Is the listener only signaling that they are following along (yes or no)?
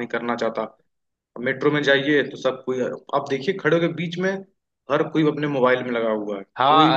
no